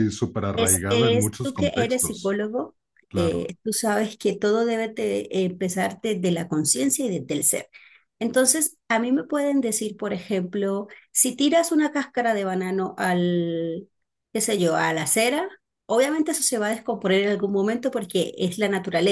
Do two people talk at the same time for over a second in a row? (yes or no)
yes